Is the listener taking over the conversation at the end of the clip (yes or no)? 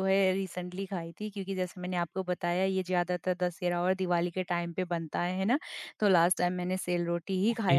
no